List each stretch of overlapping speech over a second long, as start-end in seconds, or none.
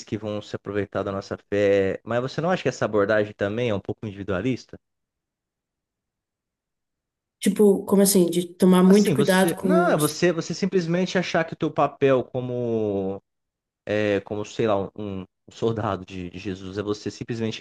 8.8-10.2